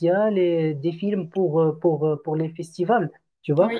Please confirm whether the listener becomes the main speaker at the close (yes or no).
no